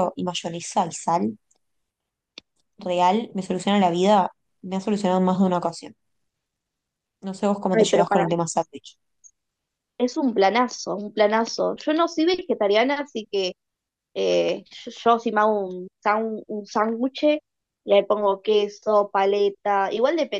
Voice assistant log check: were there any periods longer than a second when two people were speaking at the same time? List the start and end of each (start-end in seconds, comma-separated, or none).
none